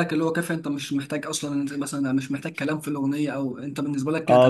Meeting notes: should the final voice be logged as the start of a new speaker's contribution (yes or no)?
yes